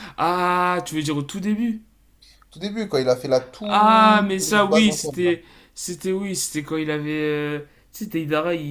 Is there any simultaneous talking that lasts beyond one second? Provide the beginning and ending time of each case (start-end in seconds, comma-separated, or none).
3.6-5.3